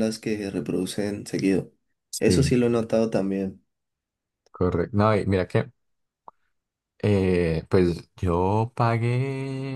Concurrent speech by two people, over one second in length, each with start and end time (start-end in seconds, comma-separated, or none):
none